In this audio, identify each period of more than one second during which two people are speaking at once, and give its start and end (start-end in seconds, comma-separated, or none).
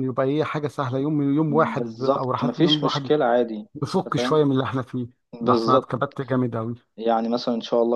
1.5-3.1